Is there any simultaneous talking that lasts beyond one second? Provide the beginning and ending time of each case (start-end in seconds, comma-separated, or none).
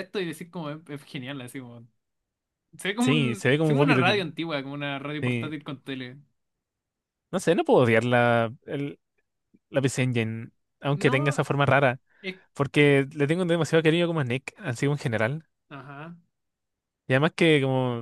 3.0-4.3